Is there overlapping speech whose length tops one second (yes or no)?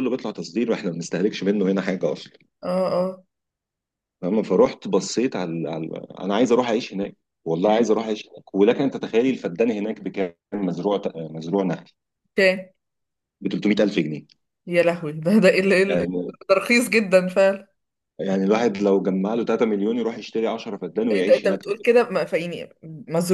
no